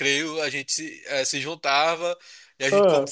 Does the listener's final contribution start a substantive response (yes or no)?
no